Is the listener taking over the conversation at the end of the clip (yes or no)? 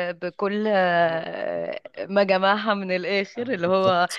no